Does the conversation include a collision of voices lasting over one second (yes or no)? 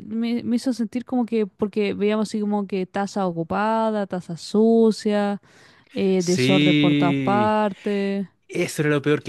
yes